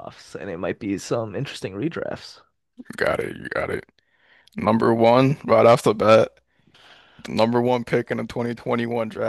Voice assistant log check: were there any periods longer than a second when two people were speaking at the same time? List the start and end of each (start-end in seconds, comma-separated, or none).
none